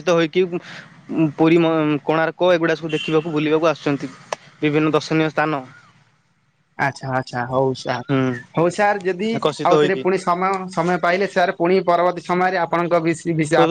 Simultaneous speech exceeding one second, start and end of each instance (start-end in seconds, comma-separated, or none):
none